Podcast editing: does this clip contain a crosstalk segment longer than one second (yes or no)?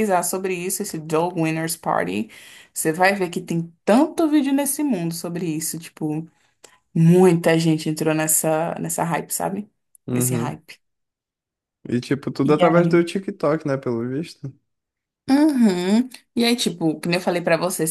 no